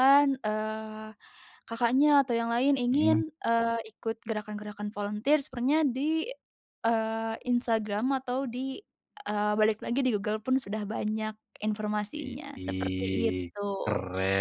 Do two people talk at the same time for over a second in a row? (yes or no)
yes